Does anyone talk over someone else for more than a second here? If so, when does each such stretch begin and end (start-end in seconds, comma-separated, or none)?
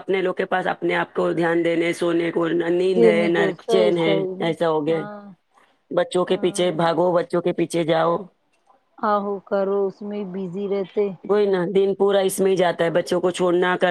3.0-5.0